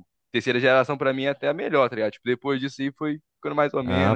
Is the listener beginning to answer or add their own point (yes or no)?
yes